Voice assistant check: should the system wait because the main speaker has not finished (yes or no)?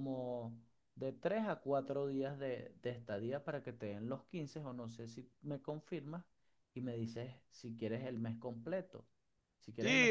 yes